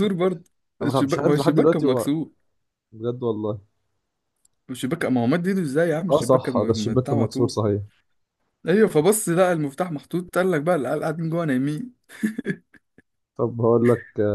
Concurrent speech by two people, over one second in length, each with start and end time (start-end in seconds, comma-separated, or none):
0.8-2.1, 6.1-7.6